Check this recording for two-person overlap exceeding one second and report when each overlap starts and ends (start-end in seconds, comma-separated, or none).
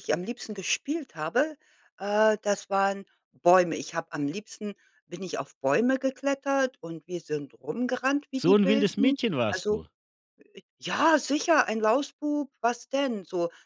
8.4-9.8